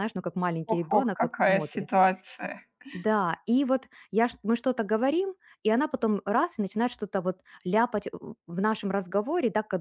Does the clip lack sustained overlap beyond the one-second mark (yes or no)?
no